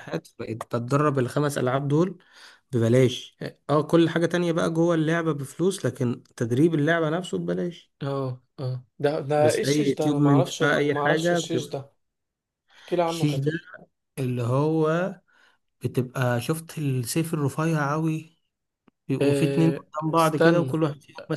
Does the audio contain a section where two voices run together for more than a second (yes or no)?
yes